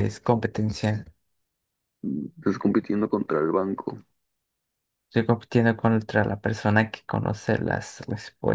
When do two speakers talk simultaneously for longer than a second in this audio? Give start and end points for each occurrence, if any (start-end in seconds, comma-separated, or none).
none